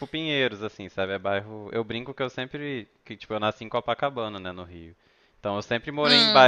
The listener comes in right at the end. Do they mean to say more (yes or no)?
no